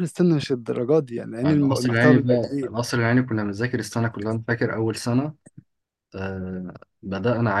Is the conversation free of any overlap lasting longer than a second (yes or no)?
no